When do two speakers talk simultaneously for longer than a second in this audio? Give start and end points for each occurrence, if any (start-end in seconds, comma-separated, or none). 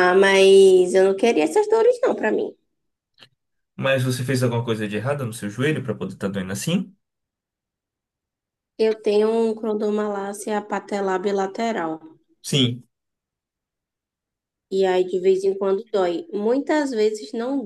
none